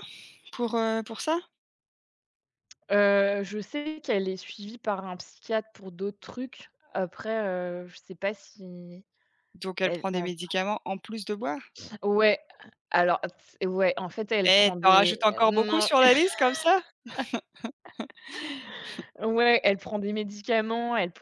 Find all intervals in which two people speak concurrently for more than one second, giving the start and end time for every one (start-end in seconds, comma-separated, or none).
14.4-15.9